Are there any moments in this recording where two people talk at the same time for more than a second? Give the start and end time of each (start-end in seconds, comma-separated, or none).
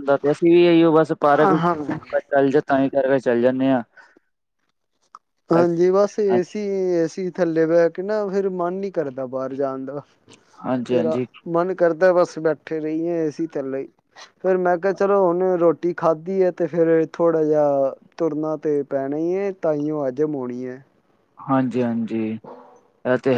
none